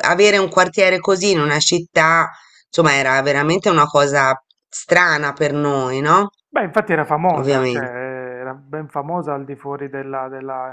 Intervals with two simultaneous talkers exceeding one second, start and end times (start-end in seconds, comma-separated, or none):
none